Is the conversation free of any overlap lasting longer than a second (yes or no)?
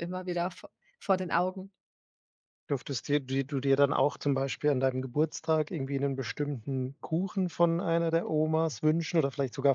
yes